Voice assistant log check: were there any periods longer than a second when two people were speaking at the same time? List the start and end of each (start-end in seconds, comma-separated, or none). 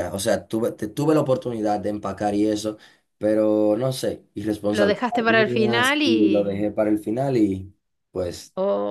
4.7-6.7